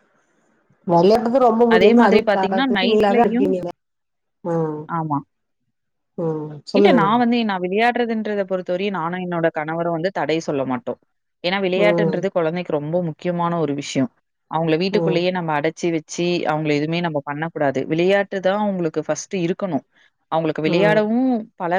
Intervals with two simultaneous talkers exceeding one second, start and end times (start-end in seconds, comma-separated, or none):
1.8-3.5